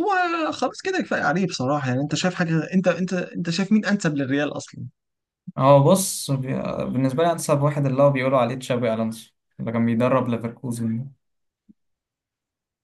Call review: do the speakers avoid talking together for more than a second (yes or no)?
yes